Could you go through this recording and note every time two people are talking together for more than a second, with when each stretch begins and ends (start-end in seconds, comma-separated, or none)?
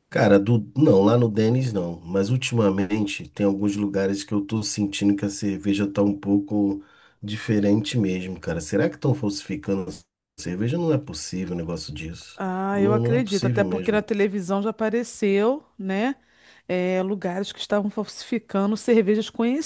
12.3-14.0